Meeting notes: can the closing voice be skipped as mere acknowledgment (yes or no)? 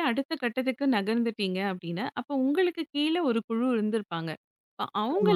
yes